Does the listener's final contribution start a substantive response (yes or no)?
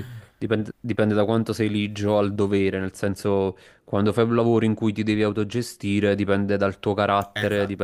no